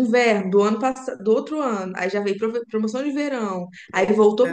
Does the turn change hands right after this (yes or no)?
no